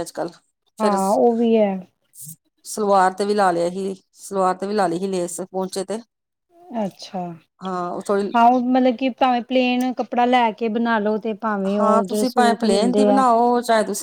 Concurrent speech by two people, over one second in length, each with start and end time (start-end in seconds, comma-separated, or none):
11.8-13.2